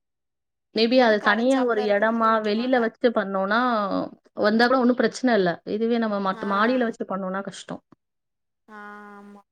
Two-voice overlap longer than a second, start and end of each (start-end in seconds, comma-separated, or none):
1.0-2.8